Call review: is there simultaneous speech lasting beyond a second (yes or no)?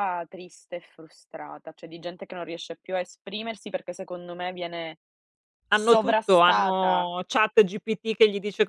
yes